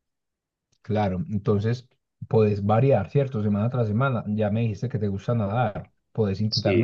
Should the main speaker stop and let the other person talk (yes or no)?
no